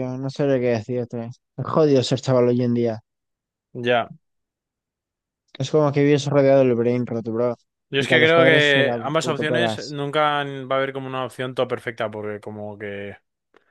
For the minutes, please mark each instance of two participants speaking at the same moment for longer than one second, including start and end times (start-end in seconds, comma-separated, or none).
8.0-10.0